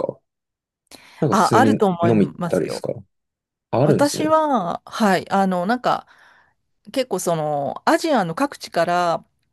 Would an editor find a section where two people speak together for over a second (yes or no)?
yes